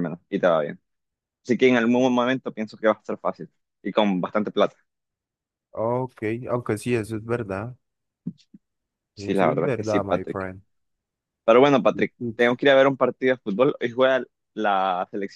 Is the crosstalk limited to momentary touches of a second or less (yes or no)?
no